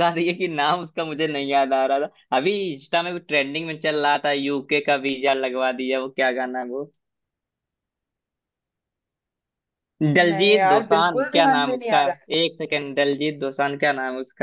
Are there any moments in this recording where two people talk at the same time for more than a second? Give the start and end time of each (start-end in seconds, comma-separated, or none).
10.3-12.0